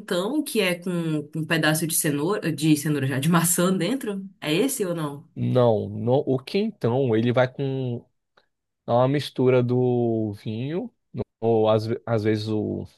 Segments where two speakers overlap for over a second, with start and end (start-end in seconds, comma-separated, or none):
none